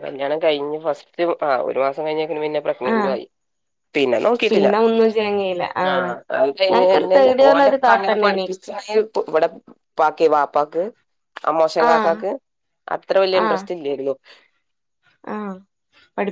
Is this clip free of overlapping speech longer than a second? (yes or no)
no